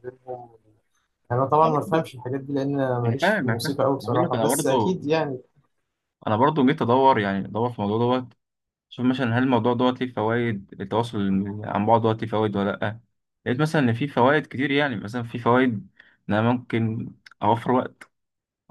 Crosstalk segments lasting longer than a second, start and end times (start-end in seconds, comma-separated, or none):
3.0-5.0